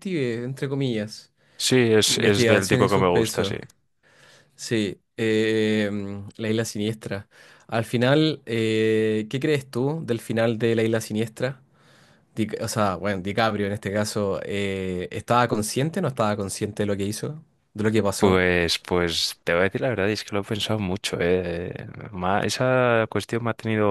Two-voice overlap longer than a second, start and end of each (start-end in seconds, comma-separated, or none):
2.0-3.6